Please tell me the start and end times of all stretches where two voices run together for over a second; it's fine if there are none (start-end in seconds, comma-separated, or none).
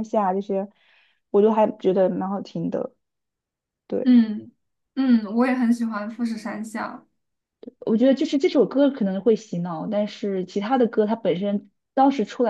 none